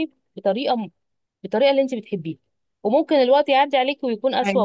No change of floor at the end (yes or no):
yes